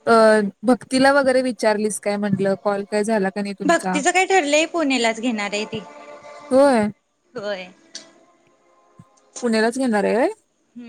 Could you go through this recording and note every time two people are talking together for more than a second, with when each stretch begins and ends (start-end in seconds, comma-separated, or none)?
none